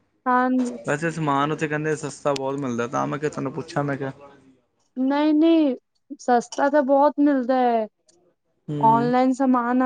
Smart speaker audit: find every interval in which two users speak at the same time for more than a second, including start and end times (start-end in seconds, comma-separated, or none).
none